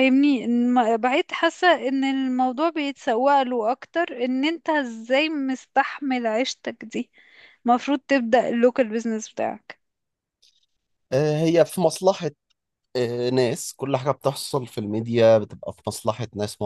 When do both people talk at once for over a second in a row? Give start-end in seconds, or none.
none